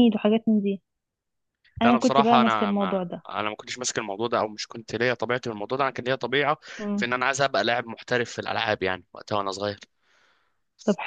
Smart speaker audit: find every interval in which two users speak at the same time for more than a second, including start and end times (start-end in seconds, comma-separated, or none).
1.8-3.2